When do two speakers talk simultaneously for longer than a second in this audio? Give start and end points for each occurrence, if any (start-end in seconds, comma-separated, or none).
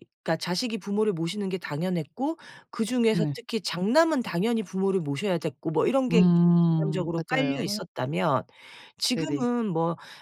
6.1-7.8